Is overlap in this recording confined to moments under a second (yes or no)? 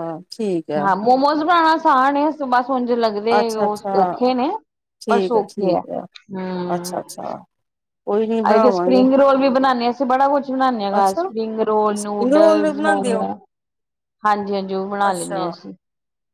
no